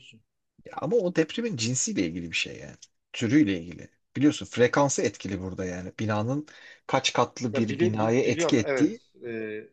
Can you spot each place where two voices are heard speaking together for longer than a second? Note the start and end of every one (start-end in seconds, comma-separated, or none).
7.5-9.0